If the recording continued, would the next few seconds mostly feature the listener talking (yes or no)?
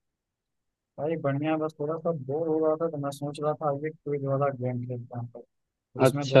no